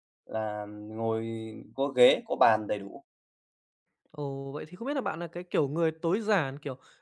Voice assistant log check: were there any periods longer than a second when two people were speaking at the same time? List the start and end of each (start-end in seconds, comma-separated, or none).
none